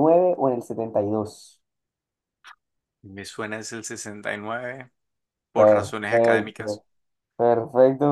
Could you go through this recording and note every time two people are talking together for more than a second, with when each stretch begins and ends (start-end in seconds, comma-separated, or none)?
5.5-6.8